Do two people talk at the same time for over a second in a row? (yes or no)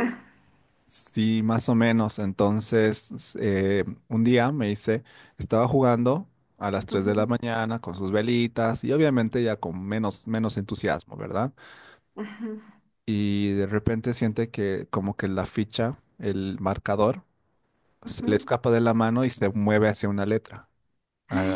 no